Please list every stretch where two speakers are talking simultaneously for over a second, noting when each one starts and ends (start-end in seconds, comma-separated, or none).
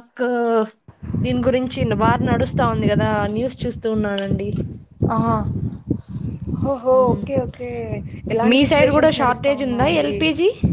8.5-10.1